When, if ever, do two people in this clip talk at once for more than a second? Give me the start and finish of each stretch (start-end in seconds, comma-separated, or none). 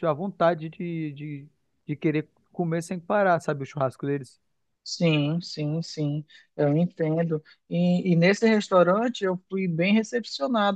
none